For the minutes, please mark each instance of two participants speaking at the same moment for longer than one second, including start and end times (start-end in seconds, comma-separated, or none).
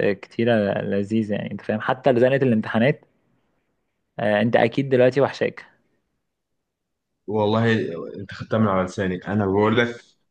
none